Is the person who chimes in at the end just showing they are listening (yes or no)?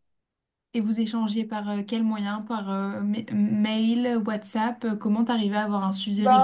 no